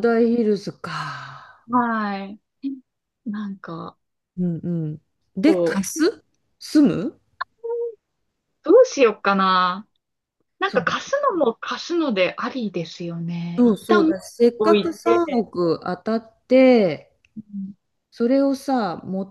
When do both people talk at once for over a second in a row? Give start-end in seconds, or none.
13.6-15.5